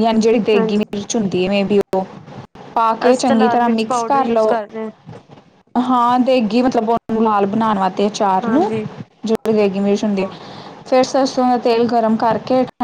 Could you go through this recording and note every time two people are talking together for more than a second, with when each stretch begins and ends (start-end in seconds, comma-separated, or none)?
3.1-4.6